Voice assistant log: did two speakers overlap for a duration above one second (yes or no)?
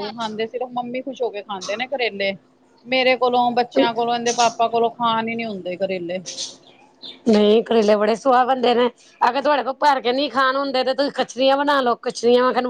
no